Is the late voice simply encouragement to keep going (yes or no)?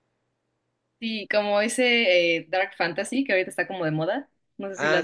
no